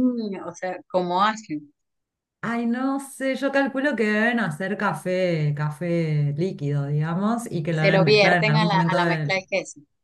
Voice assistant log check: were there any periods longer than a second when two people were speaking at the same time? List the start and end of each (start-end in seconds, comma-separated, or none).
7.7-9.4